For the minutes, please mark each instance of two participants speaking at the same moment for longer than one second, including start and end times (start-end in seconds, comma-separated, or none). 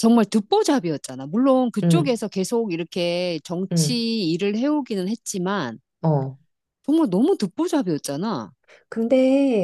none